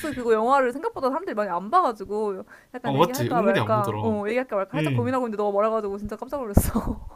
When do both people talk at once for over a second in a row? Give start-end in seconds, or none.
2.8-4.1